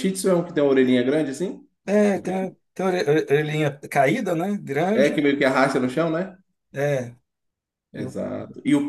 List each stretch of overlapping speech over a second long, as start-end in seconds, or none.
none